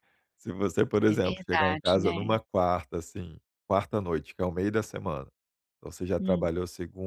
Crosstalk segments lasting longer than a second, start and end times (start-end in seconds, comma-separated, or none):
1.1-2.4